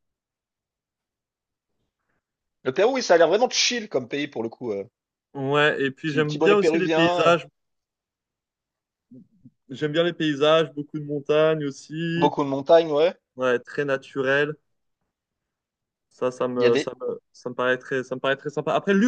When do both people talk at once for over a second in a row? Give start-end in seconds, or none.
6.0-7.3